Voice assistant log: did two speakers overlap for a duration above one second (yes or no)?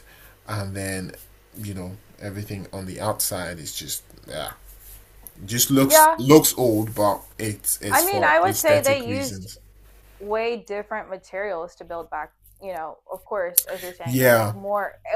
yes